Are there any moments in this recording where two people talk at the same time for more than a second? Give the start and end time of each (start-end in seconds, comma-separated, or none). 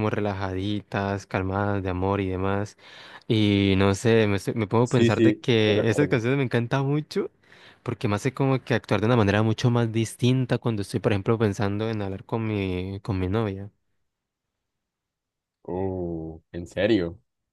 4.8-6.2